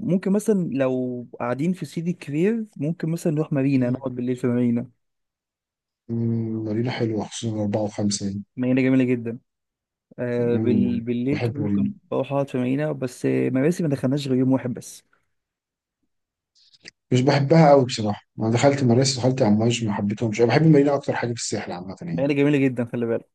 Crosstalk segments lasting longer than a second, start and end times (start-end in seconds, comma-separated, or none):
10.4-11.9